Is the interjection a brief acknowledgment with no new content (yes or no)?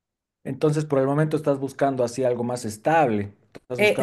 no